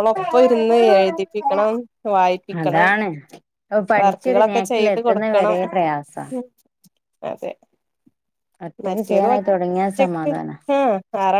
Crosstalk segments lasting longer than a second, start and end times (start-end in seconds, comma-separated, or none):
4.0-5.6, 8.8-10.3